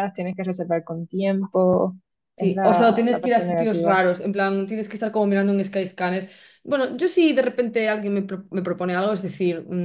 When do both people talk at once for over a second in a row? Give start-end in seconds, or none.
2.4-4.0